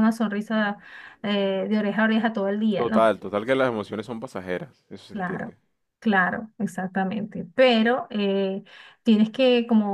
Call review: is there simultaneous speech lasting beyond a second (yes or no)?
no